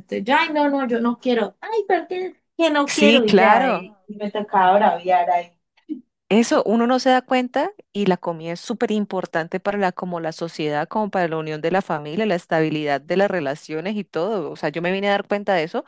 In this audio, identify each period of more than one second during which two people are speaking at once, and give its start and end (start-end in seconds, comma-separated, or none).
2.9-4.1